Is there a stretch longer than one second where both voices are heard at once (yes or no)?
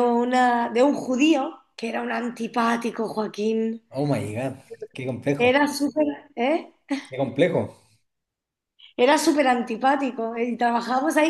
no